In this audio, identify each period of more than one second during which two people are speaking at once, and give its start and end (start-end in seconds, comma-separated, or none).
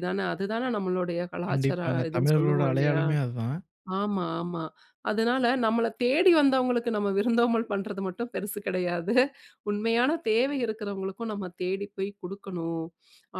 1.5-3.0